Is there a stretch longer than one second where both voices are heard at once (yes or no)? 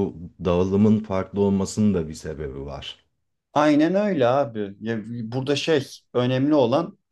no